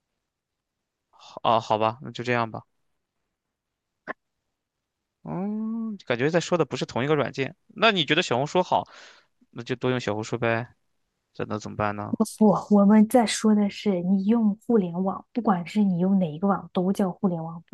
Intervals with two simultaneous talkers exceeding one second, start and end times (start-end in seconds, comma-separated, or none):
none